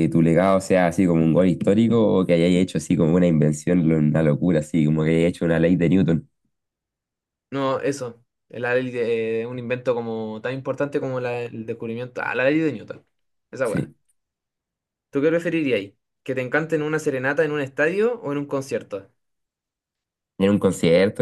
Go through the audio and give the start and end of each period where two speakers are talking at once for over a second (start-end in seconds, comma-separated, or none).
none